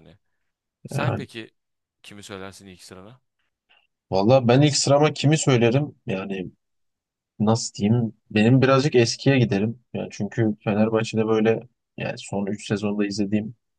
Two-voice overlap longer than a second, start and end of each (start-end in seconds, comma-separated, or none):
none